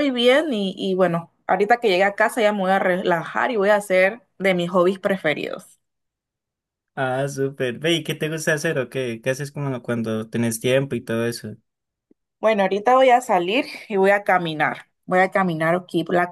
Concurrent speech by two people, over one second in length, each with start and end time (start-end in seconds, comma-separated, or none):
none